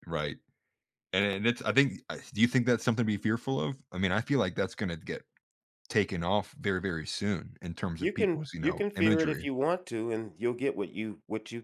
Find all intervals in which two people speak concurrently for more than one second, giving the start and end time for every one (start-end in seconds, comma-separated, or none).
8.0-9.5